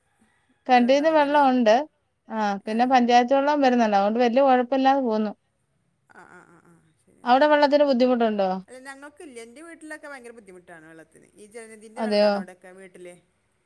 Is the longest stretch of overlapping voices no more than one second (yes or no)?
yes